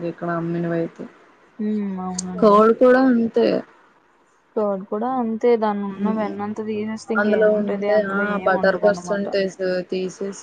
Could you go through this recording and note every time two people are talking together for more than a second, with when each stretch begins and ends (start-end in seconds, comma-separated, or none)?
7.2-9.3